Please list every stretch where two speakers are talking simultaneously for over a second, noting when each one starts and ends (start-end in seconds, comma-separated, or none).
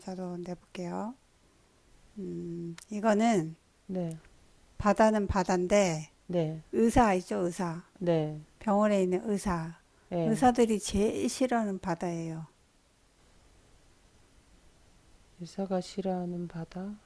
none